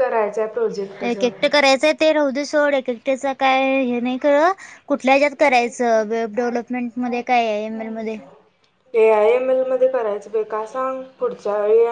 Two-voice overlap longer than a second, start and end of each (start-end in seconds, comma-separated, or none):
none